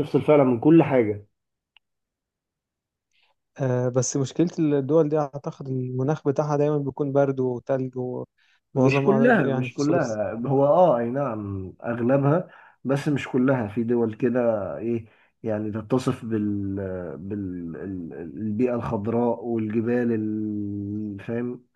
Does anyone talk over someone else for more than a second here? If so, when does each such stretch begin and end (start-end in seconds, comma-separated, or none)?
8.8-10.3